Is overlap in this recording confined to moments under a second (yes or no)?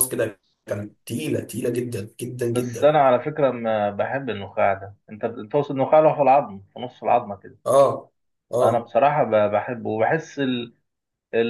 yes